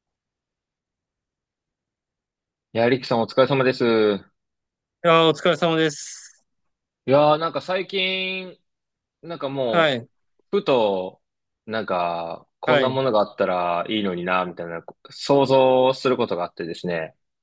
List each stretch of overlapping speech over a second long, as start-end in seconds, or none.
none